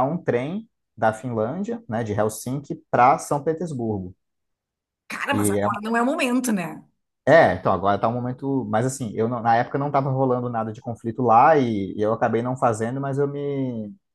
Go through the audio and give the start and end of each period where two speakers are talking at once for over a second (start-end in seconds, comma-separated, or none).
none